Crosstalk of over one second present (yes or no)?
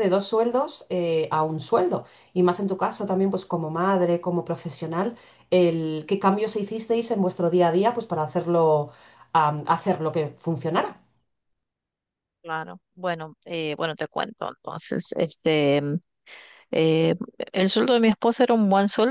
no